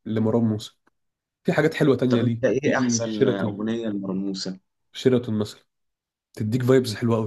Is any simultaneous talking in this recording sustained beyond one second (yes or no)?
yes